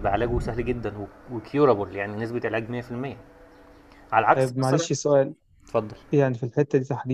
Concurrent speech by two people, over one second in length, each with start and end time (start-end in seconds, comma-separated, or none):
none